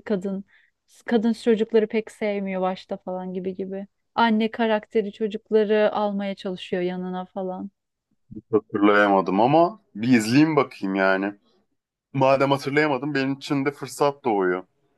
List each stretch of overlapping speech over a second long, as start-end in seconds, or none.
none